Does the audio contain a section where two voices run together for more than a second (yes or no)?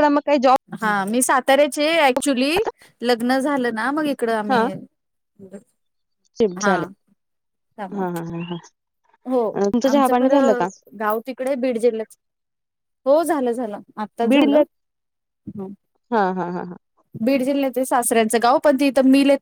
no